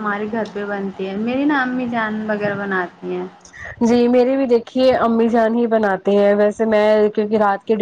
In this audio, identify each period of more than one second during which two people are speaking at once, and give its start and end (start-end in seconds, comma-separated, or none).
none